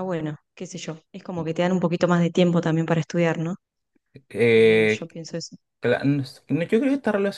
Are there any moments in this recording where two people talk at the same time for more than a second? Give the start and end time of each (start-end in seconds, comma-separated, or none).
none